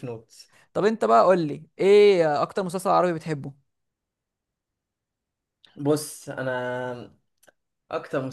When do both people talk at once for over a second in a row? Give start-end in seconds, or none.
none